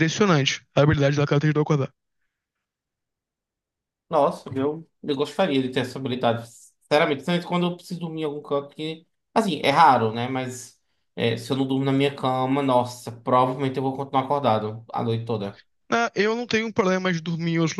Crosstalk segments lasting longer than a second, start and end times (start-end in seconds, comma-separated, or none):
none